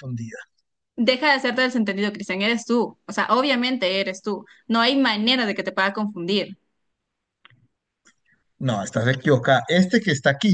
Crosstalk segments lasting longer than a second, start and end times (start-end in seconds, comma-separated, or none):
none